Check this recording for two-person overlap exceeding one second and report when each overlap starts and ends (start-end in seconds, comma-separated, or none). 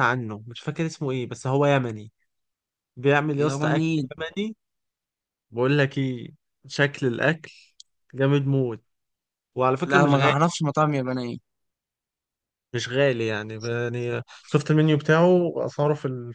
none